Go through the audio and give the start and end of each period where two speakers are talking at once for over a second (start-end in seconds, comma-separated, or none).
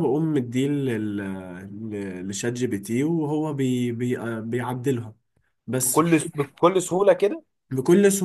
none